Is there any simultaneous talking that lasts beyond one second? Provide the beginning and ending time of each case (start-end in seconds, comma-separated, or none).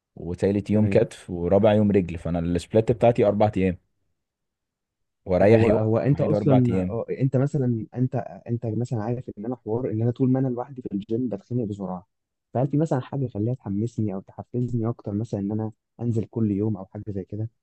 5.4-7.0